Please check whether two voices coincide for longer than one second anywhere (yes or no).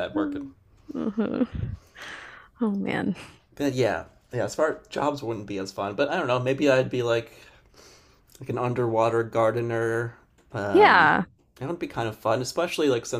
no